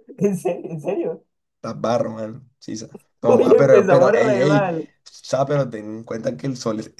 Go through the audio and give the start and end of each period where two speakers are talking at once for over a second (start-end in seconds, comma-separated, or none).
3.3-4.9